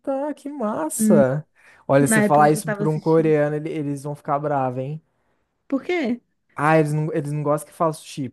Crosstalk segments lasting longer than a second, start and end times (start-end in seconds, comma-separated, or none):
2.0-3.3